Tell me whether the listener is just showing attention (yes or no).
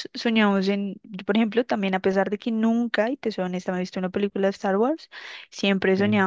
yes